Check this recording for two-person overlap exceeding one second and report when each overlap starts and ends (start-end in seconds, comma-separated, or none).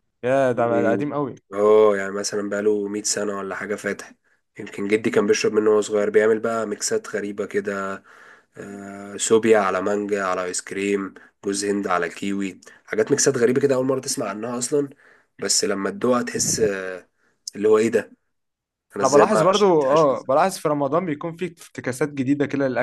19.0-20.4